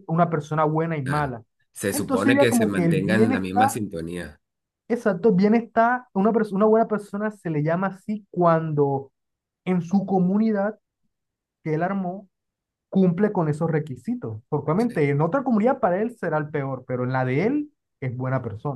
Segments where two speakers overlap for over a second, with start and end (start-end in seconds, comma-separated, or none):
1.9-3.8